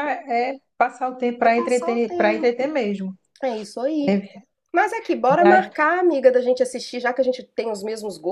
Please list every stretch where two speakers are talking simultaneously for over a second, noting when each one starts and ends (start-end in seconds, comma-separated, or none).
1.4-2.7